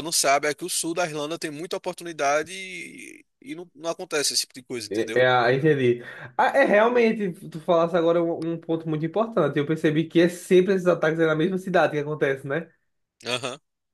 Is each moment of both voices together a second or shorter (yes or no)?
yes